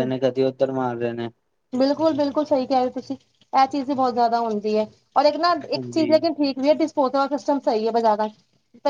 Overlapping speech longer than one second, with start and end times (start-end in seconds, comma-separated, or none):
none